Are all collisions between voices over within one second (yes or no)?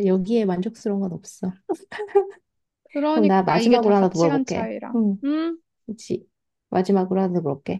no